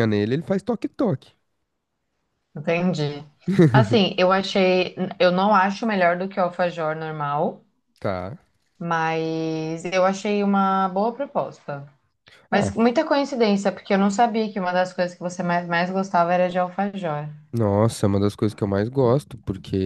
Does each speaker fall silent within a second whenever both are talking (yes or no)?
yes